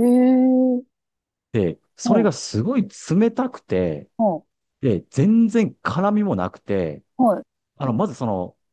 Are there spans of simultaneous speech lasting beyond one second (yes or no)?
no